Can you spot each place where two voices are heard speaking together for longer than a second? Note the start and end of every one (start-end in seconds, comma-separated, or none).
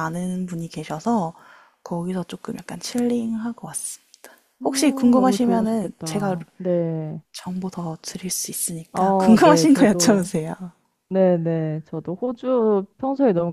5.1-6.4, 8.9-10.3